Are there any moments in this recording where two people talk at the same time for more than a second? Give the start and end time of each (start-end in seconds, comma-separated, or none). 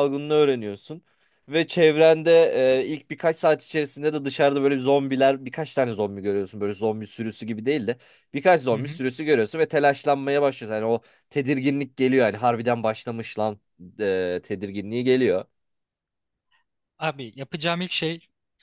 none